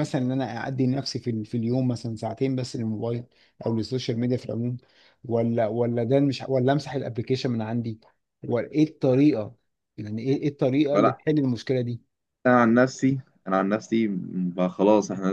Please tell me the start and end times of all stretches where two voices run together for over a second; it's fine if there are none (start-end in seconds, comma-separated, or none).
none